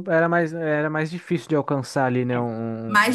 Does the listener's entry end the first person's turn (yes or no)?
yes